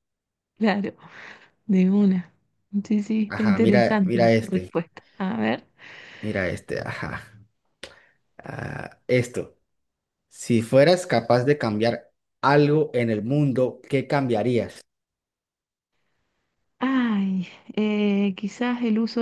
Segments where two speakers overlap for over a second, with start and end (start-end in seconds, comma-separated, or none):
3.3-4.7